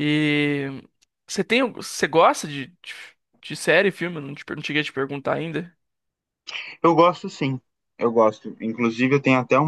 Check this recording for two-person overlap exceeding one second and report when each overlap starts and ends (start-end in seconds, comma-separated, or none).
none